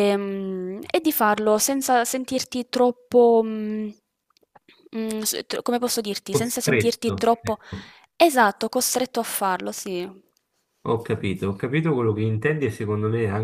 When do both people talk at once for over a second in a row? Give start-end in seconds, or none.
6.3-7.6